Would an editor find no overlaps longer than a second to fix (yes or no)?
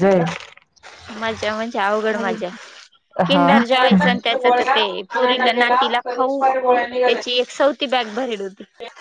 no